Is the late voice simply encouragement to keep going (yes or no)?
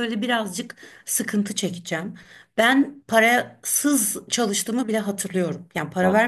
yes